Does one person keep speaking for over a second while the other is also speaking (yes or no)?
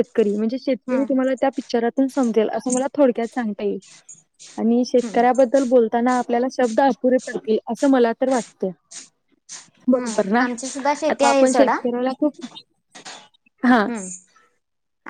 yes